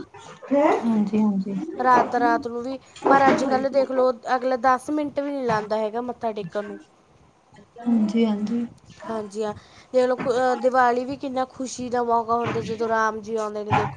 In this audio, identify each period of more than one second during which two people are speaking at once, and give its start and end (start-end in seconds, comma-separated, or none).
none